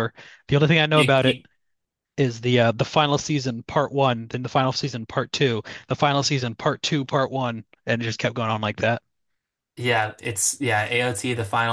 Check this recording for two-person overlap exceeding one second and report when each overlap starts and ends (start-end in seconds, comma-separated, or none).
none